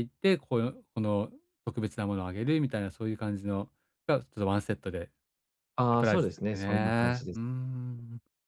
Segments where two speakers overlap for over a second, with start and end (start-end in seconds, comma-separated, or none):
5.9-7.4